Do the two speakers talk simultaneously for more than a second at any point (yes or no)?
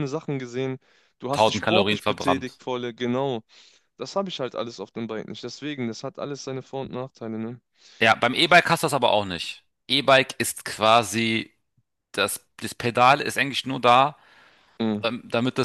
yes